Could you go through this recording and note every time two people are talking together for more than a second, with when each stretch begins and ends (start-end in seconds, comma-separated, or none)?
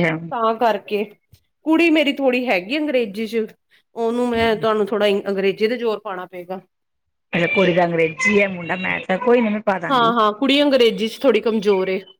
none